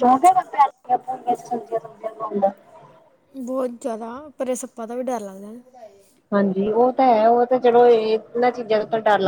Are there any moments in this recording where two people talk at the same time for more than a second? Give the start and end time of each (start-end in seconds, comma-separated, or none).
none